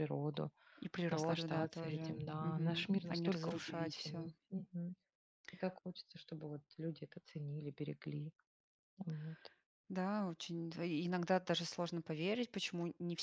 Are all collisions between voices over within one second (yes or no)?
no